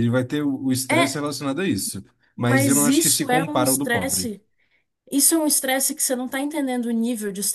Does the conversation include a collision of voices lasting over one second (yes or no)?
yes